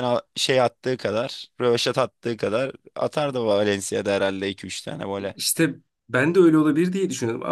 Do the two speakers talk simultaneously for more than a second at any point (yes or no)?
no